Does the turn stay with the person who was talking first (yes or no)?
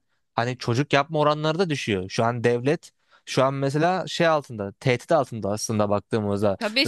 no